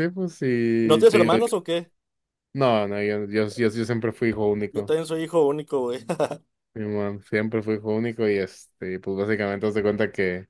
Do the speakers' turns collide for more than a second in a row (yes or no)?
no